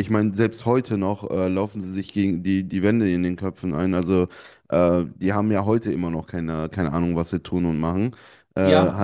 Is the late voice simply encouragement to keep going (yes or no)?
no